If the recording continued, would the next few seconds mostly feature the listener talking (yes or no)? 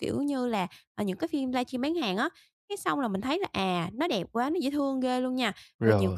no